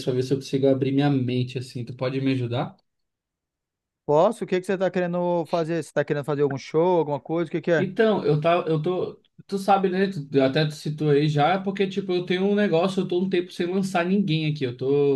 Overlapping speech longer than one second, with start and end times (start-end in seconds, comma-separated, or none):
none